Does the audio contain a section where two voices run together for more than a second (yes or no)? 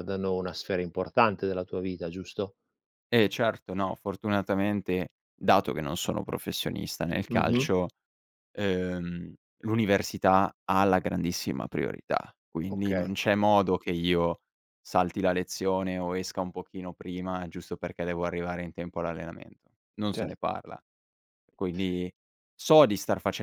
no